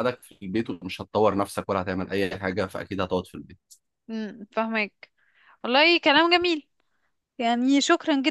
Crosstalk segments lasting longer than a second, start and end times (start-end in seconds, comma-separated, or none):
none